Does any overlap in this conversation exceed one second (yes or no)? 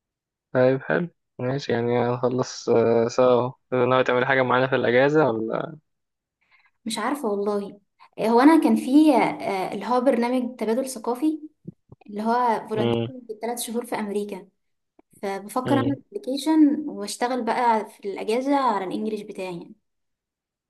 no